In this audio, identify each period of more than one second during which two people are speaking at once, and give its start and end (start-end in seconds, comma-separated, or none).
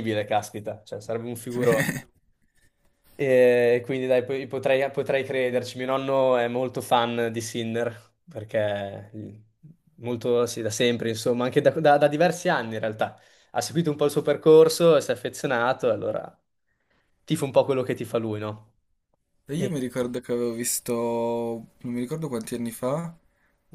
none